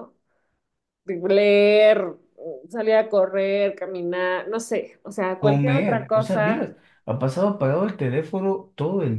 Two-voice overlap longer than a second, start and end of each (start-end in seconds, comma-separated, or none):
5.4-6.7